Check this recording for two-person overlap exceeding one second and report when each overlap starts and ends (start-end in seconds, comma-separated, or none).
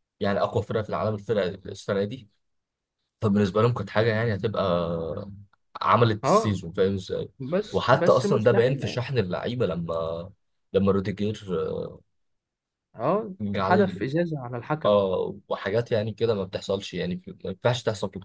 7.7-9.0